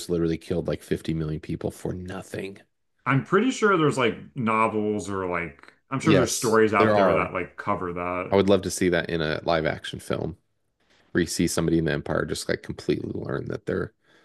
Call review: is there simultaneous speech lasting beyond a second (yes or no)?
yes